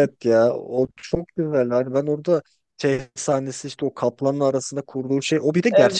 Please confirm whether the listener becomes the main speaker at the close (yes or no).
no